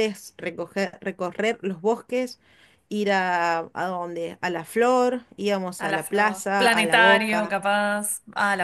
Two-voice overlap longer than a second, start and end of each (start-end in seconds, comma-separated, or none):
5.8-7.6